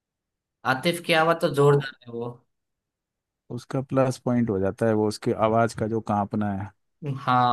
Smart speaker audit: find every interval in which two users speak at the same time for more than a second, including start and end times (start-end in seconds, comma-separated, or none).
none